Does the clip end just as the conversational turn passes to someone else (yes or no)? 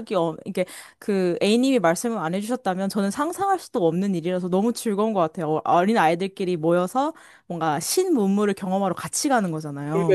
yes